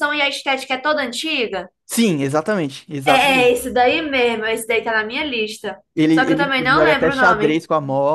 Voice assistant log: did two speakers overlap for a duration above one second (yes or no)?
yes